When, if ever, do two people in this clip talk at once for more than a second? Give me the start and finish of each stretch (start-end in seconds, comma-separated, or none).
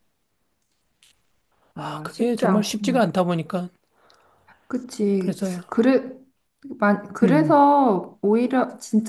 1.8-3.0